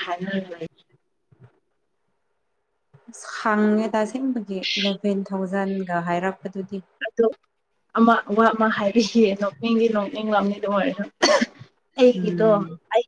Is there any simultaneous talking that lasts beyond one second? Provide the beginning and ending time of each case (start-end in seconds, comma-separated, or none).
none